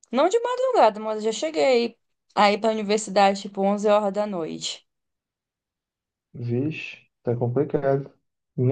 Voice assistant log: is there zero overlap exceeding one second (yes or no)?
yes